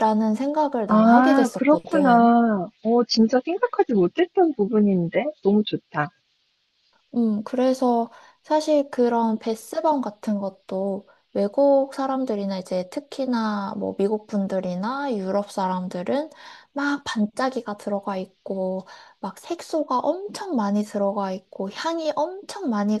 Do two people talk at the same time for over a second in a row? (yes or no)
yes